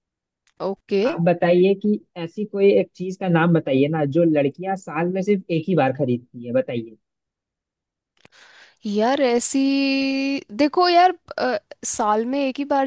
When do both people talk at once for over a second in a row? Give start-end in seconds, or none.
none